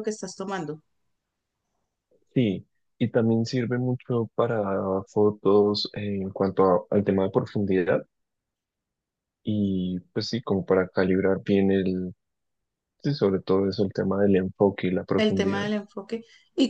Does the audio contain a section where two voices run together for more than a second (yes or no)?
no